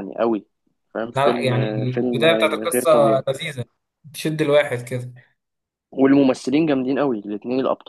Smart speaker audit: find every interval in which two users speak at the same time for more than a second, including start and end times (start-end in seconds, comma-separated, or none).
1.2-3.2